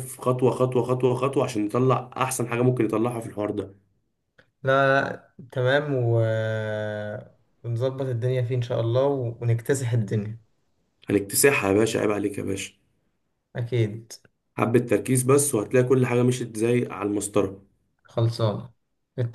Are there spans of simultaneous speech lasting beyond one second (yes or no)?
no